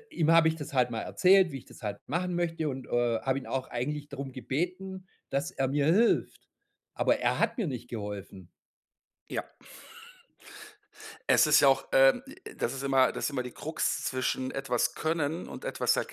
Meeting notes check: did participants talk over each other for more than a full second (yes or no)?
no